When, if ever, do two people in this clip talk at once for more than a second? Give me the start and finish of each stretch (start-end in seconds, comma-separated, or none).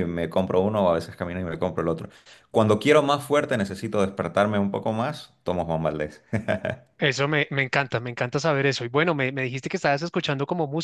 none